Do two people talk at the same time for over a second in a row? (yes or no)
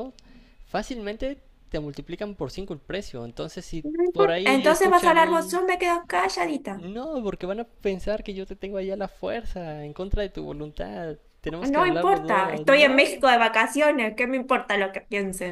yes